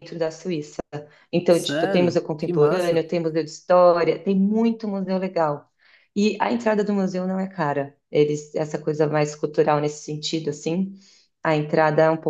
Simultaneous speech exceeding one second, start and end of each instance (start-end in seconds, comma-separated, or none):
1.5-3.0